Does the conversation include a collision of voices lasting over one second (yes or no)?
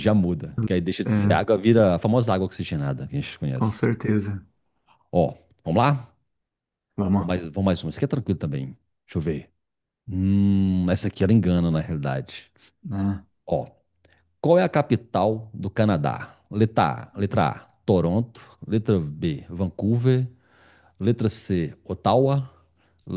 no